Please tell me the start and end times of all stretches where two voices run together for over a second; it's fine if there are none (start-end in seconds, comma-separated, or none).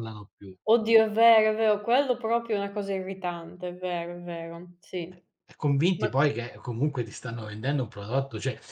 none